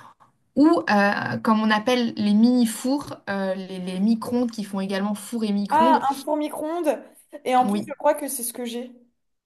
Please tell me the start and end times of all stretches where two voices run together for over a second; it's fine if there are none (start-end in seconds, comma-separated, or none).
none